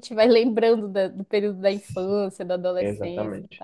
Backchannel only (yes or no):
no